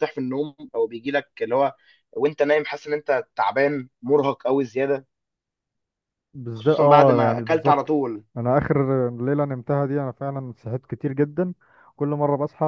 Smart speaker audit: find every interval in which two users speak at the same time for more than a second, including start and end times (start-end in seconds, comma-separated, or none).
6.5-7.9